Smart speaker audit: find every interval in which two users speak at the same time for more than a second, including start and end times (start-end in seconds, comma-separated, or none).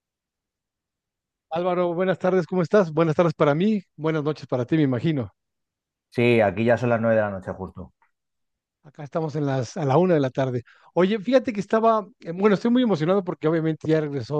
none